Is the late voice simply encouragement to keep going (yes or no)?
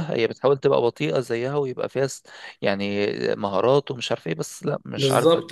no